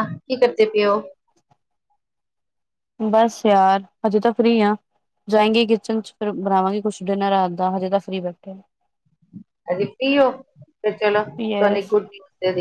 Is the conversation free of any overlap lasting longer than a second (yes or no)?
yes